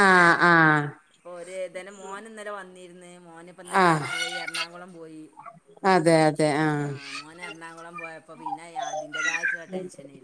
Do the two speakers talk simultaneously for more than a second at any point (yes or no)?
no